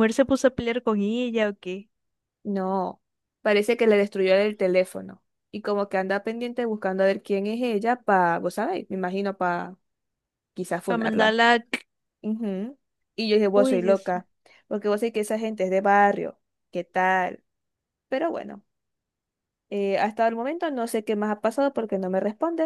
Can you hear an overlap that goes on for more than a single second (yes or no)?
no